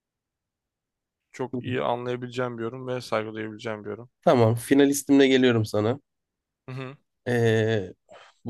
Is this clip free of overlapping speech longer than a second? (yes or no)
yes